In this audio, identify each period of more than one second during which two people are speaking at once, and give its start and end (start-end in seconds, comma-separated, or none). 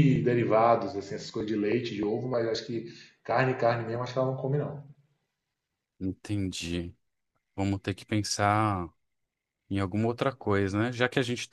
none